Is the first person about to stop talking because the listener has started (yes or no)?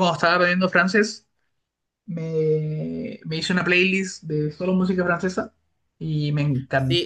yes